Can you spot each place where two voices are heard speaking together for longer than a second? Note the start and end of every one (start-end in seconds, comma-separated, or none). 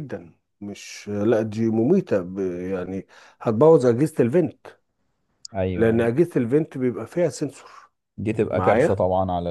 none